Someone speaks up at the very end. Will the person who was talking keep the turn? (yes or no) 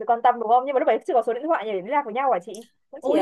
no